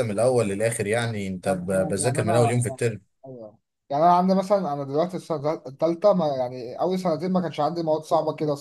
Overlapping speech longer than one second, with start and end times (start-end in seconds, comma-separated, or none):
1.5-2.8